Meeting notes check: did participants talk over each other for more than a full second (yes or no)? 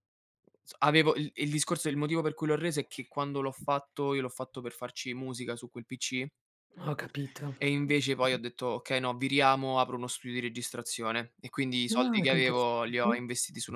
yes